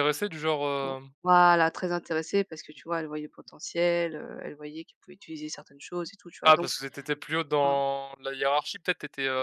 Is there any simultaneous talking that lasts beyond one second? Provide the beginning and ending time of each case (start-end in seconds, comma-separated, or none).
none